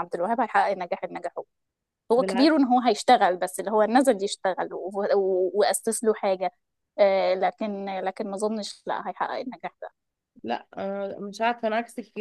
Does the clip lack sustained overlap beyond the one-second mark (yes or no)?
yes